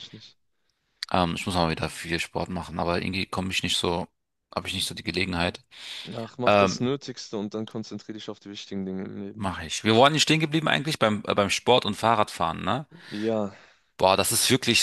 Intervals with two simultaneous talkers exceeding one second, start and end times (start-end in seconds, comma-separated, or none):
none